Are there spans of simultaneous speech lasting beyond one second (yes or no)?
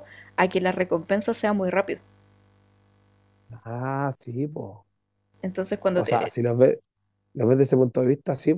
no